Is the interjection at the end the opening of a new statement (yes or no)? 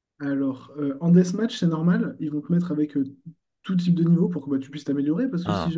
no